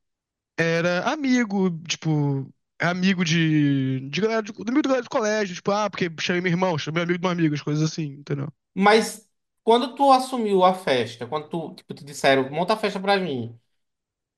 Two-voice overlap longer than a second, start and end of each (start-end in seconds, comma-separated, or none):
none